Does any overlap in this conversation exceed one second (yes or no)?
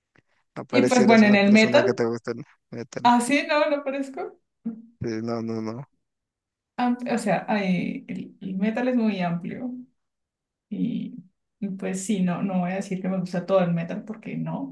yes